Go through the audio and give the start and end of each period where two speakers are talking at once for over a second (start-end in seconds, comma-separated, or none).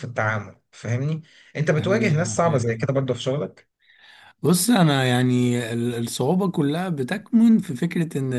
1.8-3.0